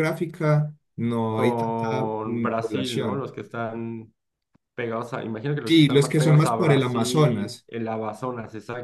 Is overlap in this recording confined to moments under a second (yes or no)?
no